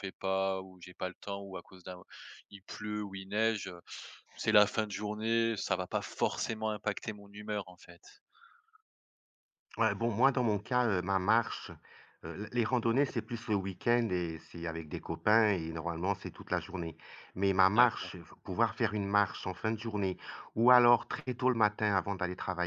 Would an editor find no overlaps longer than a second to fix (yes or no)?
yes